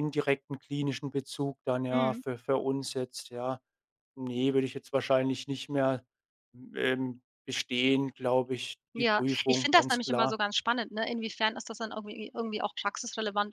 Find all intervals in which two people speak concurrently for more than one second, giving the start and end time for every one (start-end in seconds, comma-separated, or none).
9.0-10.4